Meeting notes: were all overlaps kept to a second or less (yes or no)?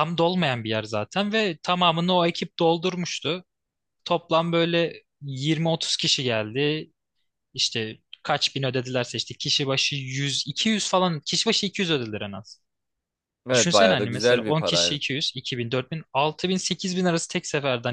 no